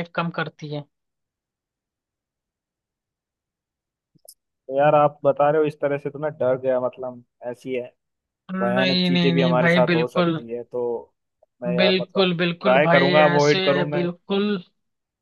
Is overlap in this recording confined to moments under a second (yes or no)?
no